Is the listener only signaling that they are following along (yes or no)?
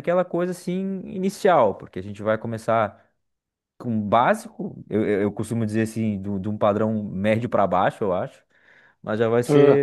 yes